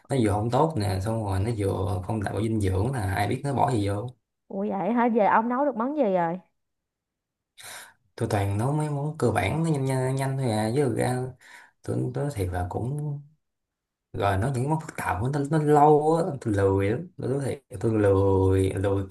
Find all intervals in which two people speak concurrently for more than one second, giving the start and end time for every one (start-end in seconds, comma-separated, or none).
none